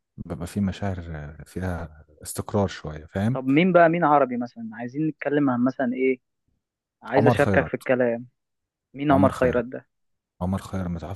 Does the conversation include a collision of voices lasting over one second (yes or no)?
no